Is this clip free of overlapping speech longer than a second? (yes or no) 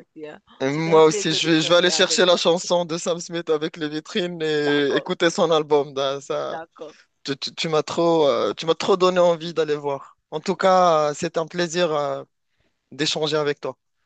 no